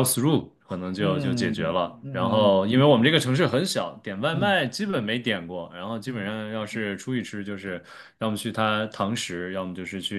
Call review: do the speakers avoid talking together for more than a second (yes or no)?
no